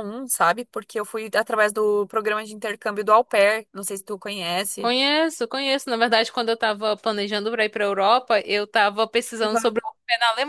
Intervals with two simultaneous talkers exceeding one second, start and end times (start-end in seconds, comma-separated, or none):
none